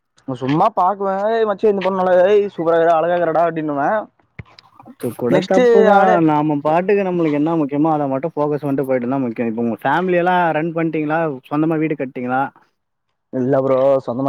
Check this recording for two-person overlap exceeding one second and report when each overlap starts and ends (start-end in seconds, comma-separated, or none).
none